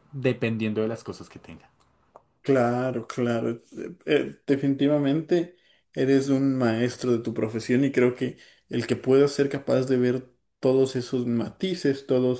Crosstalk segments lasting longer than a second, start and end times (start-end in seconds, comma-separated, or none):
none